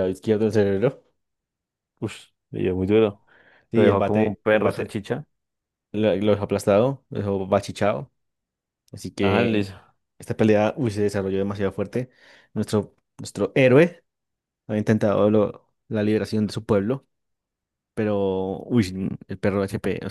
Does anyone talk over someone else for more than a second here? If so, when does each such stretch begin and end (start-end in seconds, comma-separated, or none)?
3.7-5.0